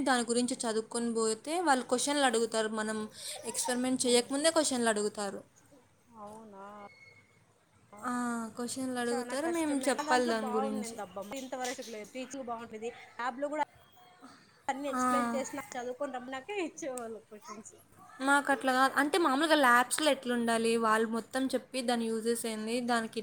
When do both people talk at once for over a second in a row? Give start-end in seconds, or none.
9.1-11.0